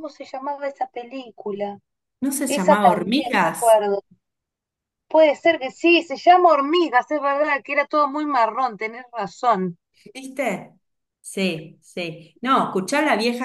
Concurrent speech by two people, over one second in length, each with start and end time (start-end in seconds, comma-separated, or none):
2.5-3.8